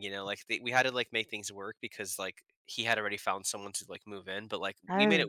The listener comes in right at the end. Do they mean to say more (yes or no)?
no